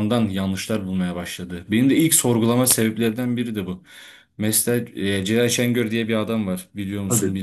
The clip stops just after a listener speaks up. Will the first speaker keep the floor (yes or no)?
no